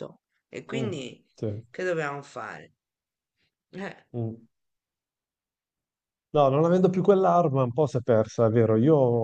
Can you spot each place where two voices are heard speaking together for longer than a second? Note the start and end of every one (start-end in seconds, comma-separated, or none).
none